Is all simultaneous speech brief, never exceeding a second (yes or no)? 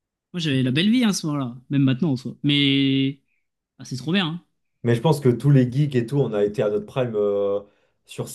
yes